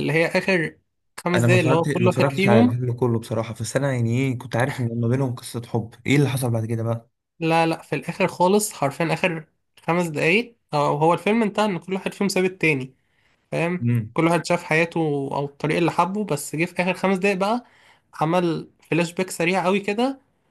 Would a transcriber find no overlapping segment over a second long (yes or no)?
no